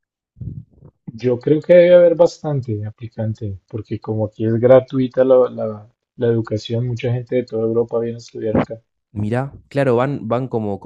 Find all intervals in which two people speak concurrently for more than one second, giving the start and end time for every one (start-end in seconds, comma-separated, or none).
none